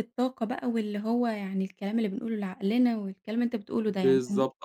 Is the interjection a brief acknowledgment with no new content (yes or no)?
no